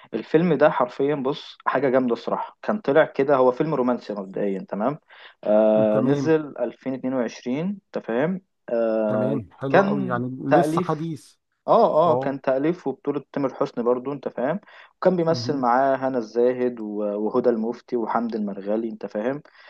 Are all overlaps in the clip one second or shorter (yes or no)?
no